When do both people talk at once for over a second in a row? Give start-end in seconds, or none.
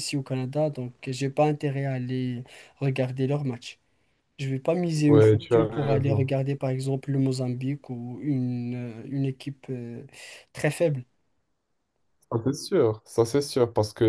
5.1-6.3